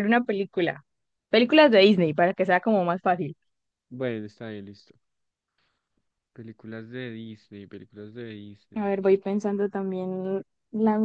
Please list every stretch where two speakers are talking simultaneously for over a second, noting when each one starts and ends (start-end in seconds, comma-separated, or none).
none